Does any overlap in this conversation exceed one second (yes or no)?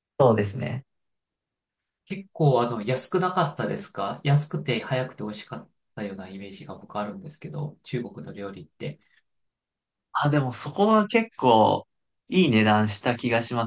no